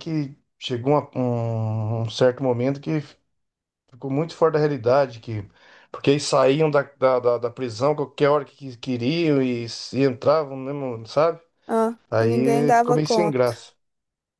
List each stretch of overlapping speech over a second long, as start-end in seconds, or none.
12.1-13.6